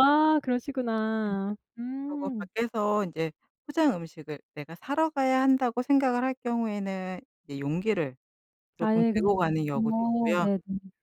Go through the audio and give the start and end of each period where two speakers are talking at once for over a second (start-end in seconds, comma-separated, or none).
8.8-10.5